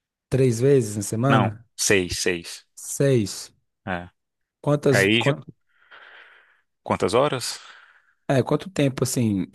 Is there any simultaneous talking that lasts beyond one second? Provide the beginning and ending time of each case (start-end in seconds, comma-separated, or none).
none